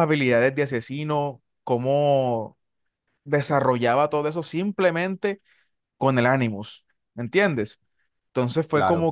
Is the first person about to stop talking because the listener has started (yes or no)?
no